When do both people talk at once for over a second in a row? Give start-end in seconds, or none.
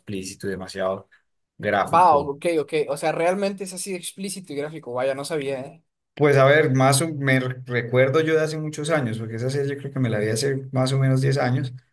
none